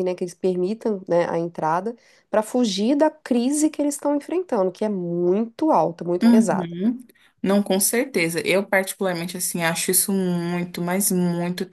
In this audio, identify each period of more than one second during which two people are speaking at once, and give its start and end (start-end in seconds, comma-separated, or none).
none